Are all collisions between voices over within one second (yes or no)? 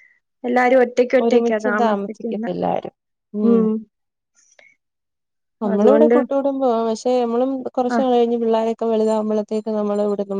no